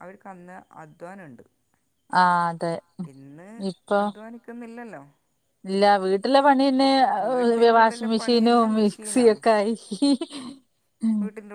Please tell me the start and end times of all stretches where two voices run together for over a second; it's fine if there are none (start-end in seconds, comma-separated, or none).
7.3-9.4